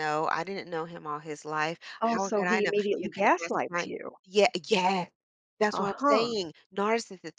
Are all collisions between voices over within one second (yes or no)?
no